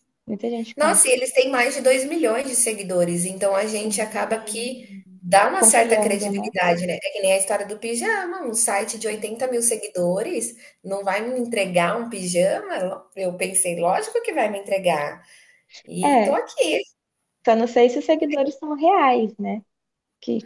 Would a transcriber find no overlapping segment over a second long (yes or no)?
no